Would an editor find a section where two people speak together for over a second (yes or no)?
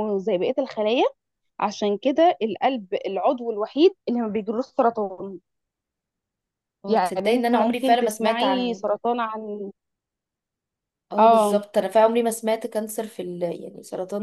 yes